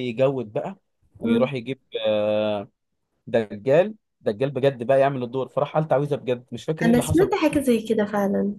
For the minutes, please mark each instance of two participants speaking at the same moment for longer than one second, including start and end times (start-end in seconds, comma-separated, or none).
none